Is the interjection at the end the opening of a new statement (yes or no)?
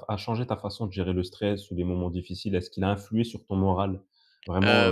yes